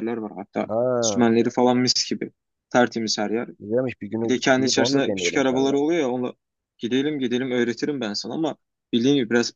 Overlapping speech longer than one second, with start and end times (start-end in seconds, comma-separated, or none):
4.2-5.8